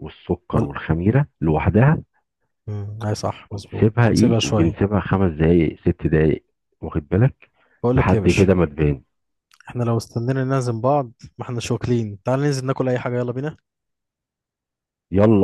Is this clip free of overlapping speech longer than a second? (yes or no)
no